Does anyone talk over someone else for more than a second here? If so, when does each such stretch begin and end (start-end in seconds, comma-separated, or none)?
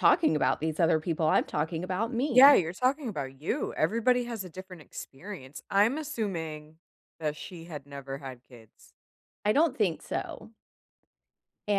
none